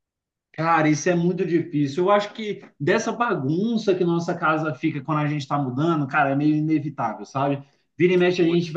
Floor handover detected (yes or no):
no